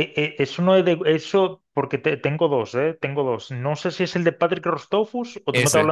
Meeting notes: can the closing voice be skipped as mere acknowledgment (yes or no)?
yes